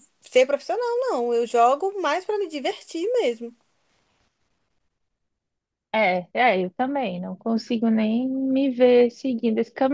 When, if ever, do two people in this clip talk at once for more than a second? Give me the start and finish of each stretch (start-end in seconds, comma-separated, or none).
none